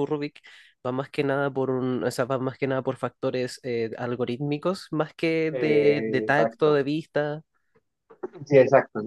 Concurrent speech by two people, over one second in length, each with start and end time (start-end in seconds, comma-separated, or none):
5.5-6.8